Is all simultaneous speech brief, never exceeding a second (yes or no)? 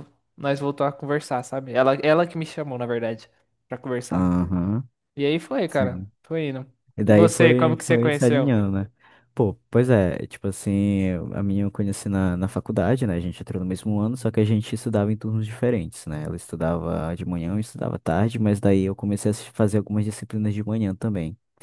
no